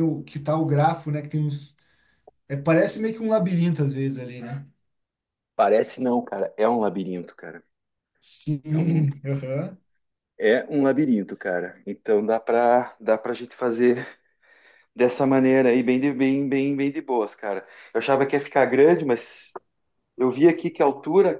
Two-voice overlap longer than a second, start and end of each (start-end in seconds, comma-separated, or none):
none